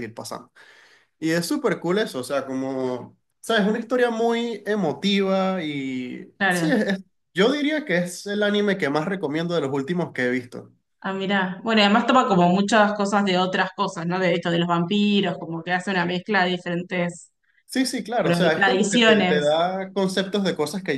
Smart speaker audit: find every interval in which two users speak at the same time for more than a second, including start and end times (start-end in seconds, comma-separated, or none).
18.2-19.6